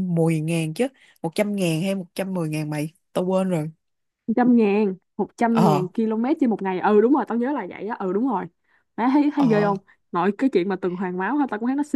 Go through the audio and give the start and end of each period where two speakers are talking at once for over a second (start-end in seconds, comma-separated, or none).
none